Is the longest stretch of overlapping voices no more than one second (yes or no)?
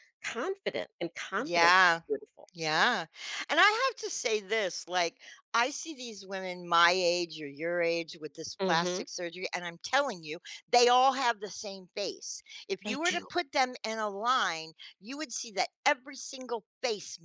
yes